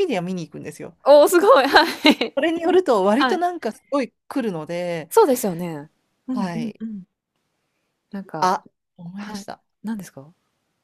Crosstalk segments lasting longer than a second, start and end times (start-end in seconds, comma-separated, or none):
none